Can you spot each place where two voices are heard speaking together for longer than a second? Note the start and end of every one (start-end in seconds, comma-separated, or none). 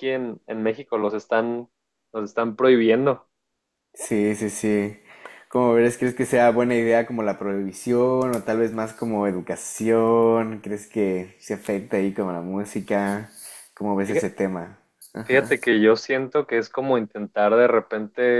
none